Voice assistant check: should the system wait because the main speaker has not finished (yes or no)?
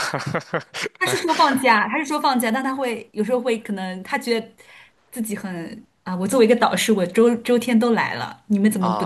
no